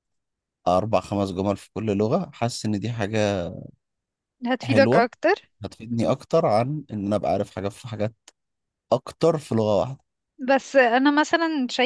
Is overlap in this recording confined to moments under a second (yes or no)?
yes